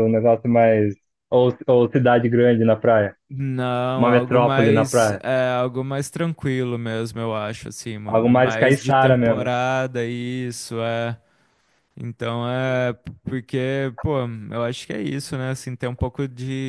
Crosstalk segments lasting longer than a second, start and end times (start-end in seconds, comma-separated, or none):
4.0-5.2, 8.1-9.5